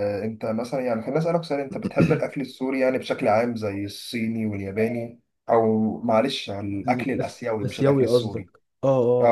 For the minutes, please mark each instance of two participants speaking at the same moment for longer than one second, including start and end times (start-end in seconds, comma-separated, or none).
6.9-8.5